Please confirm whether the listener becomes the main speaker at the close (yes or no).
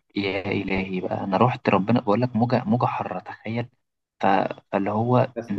yes